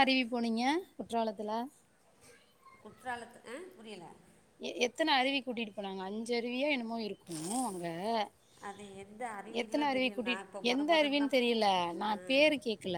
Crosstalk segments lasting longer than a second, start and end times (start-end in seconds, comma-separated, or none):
9.6-11.3